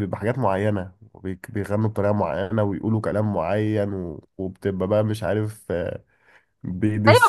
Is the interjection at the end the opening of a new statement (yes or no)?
yes